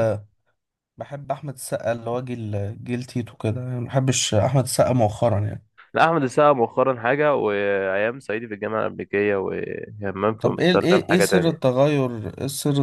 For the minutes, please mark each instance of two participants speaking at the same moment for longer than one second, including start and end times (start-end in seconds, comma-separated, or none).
10.4-11.8